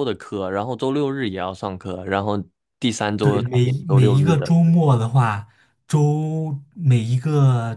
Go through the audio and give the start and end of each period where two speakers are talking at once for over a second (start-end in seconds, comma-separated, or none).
3.2-4.5